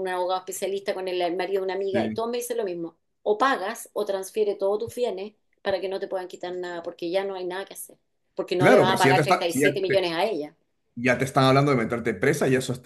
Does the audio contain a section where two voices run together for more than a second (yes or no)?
yes